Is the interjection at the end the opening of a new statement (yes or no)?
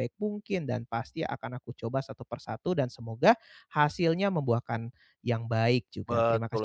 yes